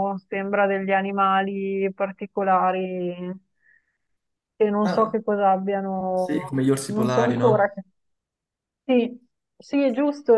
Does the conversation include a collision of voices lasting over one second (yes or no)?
yes